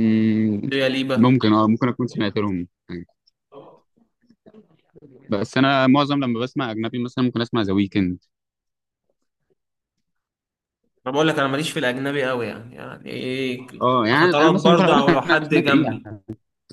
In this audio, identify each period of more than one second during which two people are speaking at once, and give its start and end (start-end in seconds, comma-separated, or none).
14.2-16.1